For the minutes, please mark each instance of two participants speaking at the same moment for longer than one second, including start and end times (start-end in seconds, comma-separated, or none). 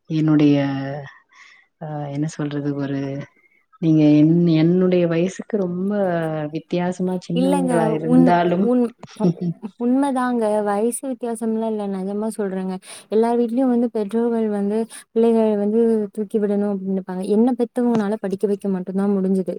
none